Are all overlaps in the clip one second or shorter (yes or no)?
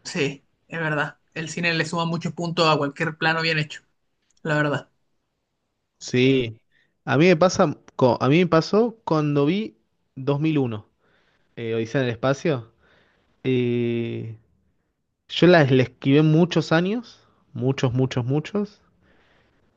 yes